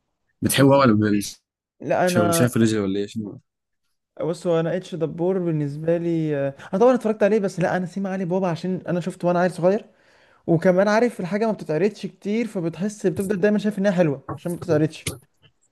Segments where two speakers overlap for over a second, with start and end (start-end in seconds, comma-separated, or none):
none